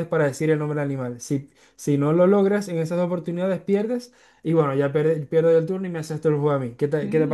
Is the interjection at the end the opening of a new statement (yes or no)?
yes